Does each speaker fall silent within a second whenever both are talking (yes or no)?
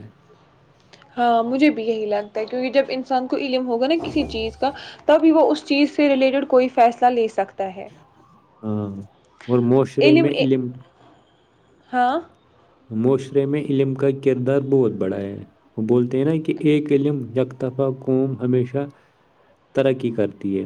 yes